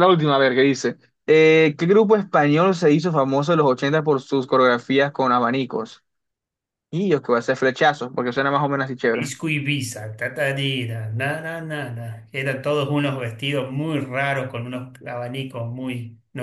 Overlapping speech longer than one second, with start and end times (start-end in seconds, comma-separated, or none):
none